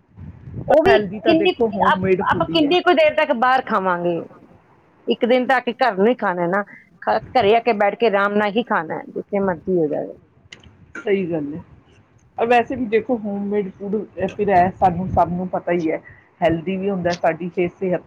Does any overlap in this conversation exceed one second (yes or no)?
yes